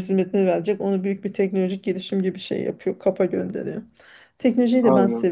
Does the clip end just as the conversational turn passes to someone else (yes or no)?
no